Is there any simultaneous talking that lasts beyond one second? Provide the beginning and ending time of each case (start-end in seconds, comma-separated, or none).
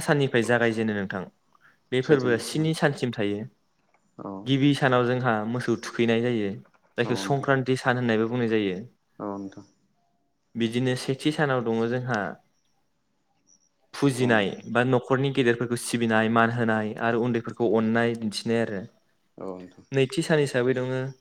none